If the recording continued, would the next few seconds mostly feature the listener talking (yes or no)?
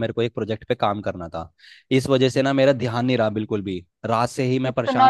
yes